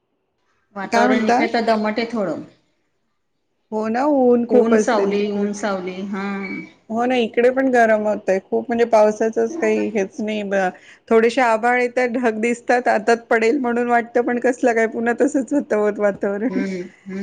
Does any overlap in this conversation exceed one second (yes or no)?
no